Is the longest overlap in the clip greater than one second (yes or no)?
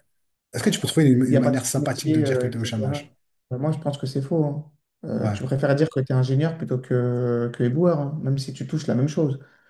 yes